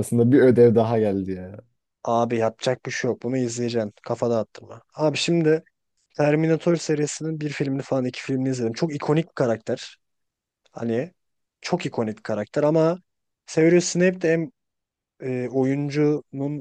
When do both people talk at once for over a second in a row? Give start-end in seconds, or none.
none